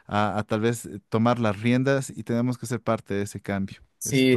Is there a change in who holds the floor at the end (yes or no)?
yes